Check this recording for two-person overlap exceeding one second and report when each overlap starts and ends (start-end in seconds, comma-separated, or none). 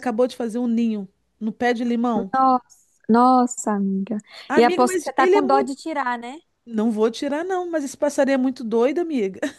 4.5-5.8